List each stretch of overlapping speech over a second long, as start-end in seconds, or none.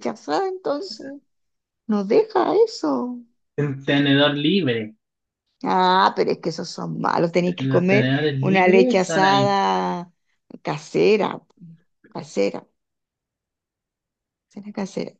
7.6-9.5